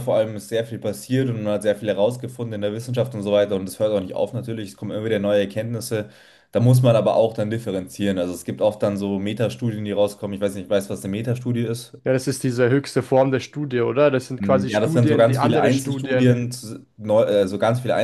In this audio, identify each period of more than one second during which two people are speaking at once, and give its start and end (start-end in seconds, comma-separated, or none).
14.4-16.4